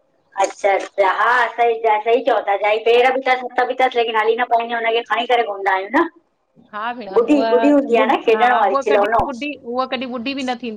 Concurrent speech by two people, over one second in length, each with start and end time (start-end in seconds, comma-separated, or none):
7.2-9.3